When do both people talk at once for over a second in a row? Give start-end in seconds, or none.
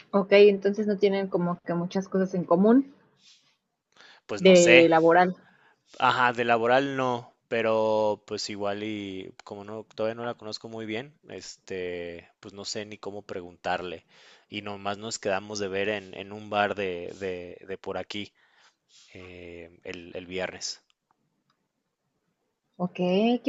none